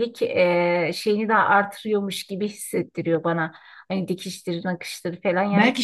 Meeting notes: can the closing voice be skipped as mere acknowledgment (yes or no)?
no